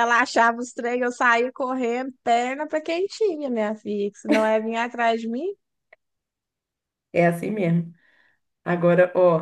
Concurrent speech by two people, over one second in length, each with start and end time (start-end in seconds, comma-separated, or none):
none